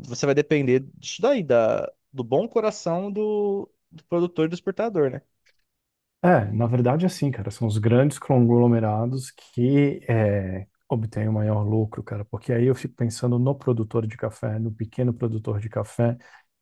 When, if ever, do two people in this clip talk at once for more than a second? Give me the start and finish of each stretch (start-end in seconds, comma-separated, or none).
none